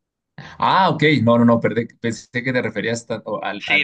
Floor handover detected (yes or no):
yes